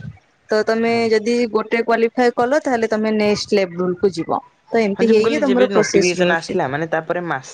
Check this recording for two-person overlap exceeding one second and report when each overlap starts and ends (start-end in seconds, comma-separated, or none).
5.0-6.6